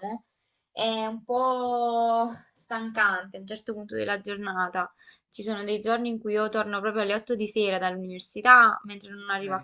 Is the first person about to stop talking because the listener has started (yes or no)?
no